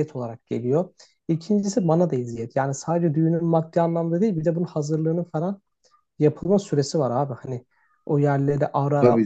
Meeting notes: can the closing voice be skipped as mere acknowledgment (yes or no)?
no